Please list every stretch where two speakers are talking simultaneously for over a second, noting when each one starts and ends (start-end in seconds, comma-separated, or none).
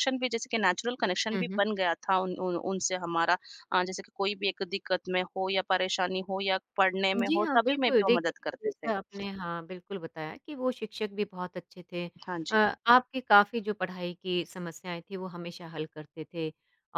7.2-8.9